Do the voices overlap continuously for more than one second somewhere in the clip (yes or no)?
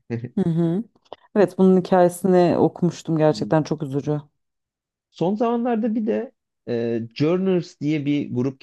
no